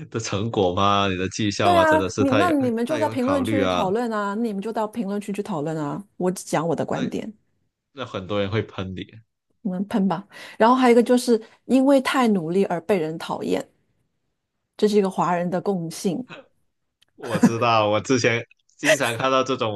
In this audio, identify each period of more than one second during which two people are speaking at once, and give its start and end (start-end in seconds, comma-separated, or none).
1.6-3.9